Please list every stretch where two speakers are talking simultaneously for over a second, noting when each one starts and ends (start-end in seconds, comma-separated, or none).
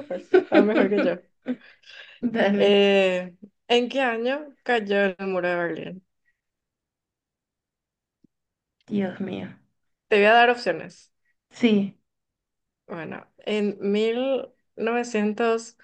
none